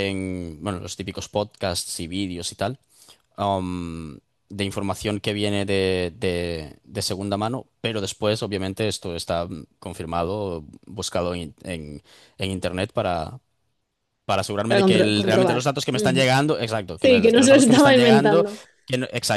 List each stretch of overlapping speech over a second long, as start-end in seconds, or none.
14.7-16.3, 16.9-18.4